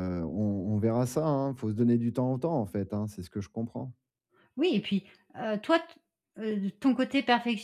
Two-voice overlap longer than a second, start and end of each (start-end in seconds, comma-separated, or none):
none